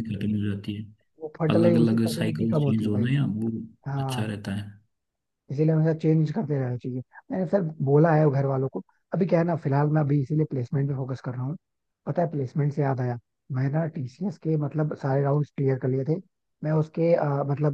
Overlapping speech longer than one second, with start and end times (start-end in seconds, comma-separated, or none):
1.6-3.1